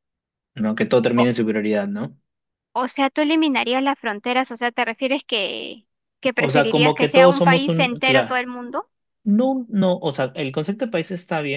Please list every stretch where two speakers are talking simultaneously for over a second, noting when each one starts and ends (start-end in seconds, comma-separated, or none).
6.4-8.4